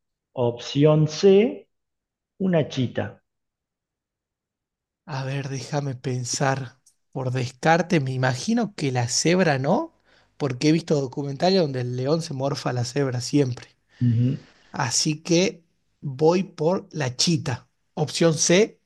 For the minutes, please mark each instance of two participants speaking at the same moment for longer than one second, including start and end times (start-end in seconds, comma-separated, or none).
none